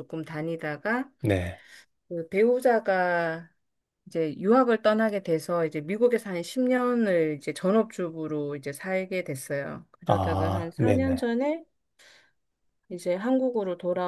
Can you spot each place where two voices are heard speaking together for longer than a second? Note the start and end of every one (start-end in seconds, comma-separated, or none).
10.1-11.2